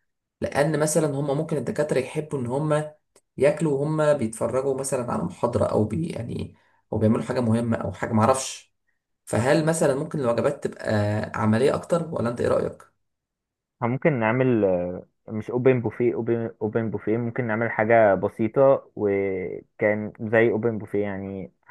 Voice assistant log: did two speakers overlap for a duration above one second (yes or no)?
no